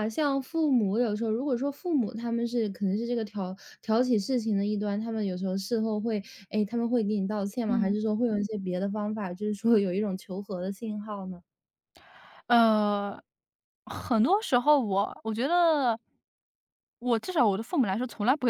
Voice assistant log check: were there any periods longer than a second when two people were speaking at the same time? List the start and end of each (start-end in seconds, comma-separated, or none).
none